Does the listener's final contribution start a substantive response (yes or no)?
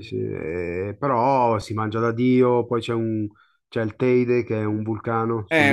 yes